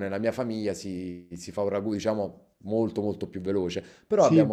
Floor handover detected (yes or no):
no